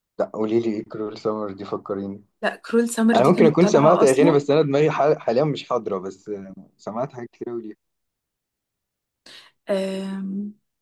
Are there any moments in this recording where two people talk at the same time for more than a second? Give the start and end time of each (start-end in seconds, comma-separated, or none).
3.1-4.4